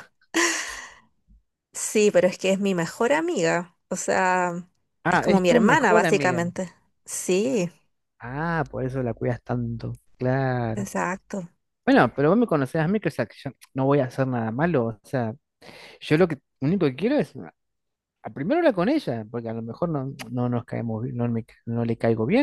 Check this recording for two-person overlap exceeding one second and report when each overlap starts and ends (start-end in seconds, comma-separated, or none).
5.1-6.4